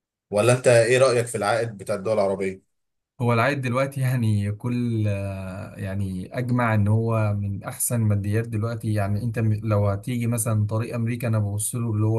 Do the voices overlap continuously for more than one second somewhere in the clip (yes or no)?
no